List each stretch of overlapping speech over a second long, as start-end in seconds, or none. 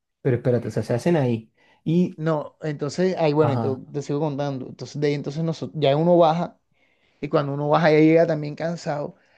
none